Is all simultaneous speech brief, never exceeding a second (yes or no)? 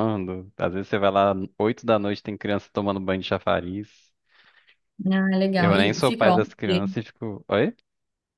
no